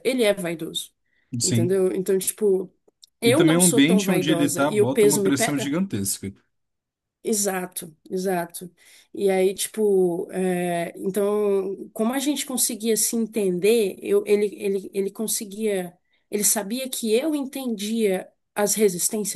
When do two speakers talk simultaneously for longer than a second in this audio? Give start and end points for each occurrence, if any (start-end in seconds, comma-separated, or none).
3.2-5.8